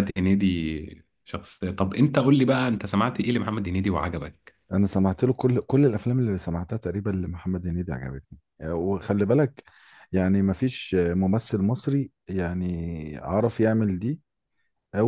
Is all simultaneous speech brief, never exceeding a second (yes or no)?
yes